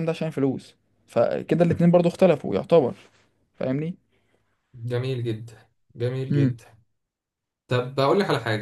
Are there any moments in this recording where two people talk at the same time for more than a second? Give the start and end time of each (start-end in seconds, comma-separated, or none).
none